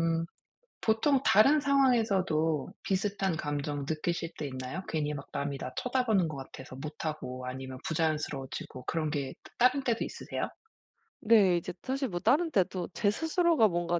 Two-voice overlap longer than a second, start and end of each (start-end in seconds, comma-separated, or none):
none